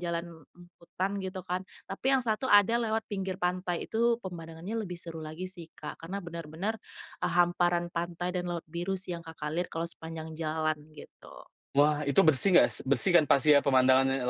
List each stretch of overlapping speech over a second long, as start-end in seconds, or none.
none